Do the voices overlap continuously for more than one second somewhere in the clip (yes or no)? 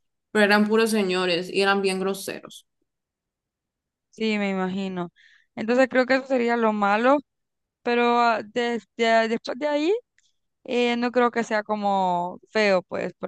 no